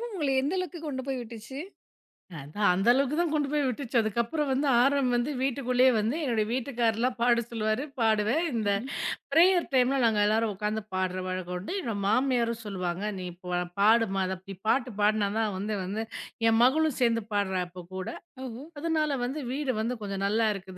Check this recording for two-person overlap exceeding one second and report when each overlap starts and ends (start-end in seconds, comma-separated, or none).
none